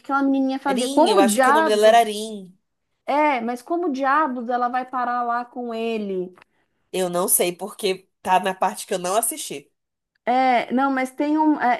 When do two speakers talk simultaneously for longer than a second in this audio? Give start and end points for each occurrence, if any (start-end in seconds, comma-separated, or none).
0.8-2.1